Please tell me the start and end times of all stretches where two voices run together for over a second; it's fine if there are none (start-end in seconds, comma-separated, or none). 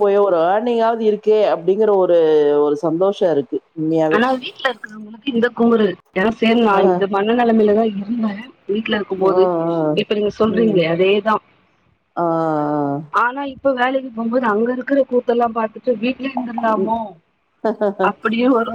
none